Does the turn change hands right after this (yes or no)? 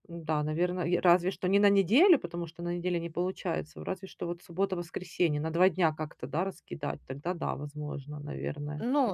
yes